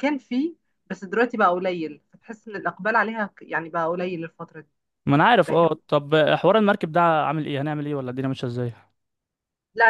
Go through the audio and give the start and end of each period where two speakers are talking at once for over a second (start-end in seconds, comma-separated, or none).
none